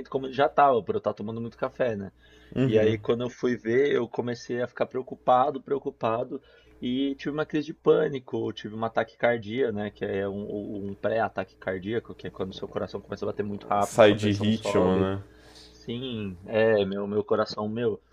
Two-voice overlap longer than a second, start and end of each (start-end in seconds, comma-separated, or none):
13.8-15.1